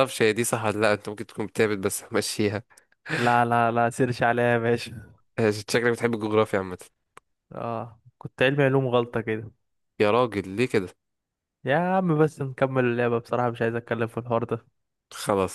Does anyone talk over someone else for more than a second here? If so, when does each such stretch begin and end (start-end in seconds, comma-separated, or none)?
none